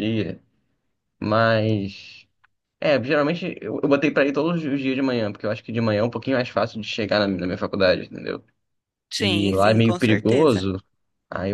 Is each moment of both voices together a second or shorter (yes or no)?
no